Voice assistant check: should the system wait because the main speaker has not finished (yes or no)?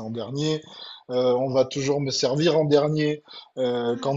yes